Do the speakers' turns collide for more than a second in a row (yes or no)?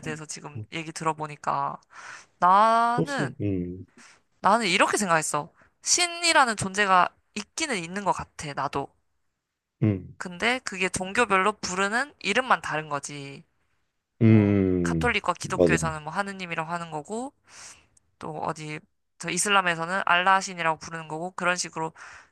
yes